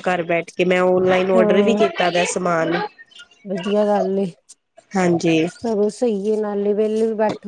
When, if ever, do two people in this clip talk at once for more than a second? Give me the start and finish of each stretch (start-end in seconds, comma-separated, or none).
none